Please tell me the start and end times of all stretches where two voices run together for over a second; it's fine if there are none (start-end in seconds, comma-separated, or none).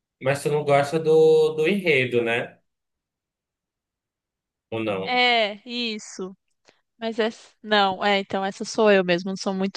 none